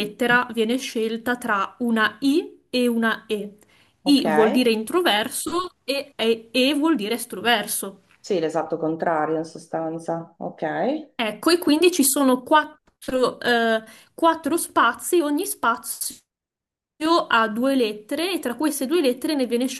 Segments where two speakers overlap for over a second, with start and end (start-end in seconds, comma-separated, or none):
none